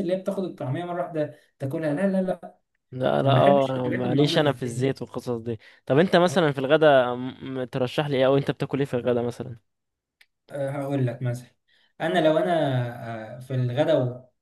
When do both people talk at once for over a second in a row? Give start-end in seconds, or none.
3.2-4.9